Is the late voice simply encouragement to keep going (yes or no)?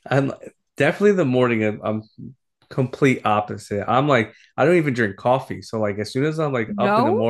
yes